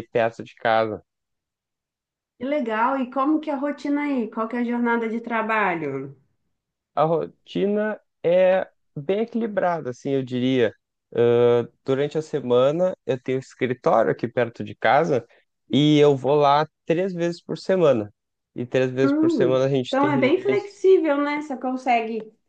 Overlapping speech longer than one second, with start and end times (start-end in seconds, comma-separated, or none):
19.0-20.8